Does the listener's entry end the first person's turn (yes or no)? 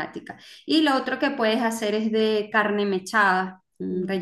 no